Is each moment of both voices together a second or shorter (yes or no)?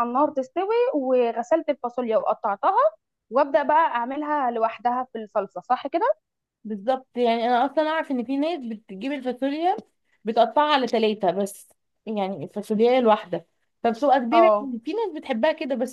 yes